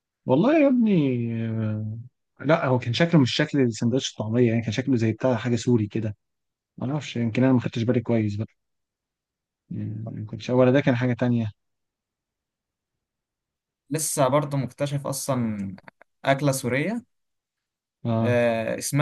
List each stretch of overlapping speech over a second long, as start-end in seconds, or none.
none